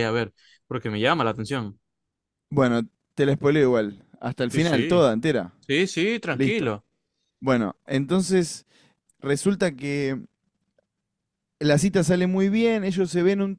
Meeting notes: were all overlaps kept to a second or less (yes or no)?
yes